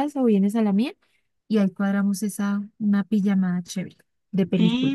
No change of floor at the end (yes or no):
no